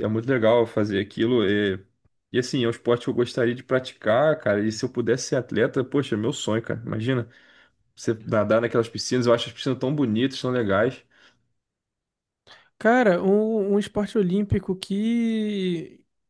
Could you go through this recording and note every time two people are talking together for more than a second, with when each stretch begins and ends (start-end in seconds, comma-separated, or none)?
none